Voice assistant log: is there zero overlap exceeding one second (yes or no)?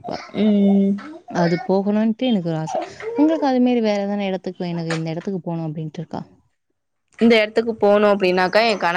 yes